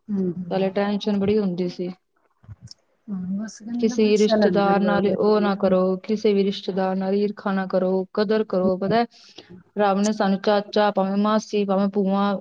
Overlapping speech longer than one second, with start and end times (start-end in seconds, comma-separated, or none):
3.8-5.7